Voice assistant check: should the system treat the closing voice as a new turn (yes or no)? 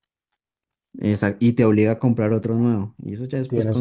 yes